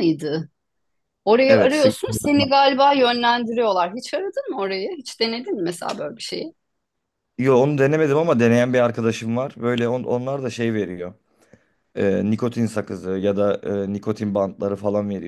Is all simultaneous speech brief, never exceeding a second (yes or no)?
yes